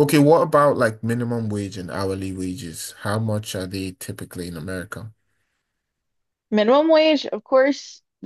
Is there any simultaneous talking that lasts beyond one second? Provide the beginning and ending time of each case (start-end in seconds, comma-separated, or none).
none